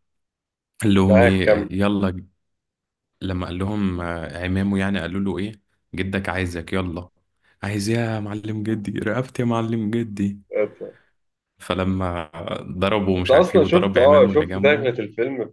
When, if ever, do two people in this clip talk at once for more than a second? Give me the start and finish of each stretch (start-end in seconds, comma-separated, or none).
13.2-14.9